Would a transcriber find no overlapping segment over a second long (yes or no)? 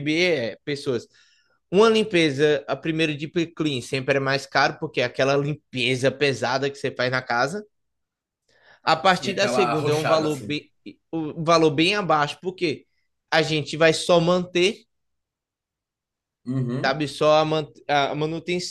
no